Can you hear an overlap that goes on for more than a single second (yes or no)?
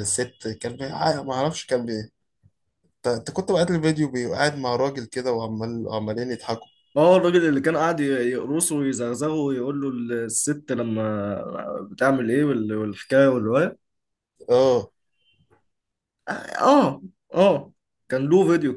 no